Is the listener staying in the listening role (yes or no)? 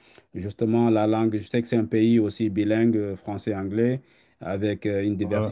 yes